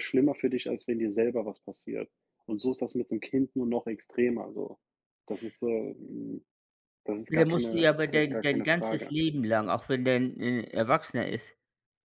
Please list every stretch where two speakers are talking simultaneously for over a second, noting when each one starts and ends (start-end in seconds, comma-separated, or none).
7.3-9.1